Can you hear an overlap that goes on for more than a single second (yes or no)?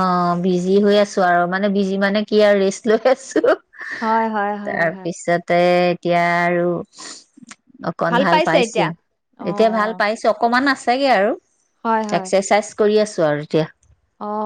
no